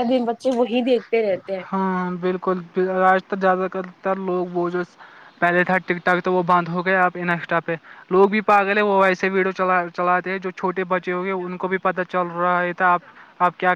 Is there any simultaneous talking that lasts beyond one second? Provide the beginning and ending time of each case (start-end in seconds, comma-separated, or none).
none